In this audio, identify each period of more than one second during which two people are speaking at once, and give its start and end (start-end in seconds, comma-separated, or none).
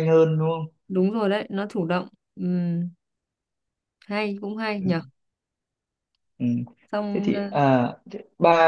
none